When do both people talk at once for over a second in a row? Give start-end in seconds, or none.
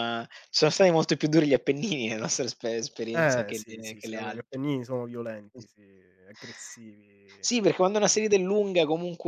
3.1-4.6